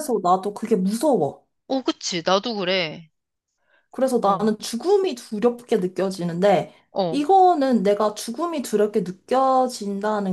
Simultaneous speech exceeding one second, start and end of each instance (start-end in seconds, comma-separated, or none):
none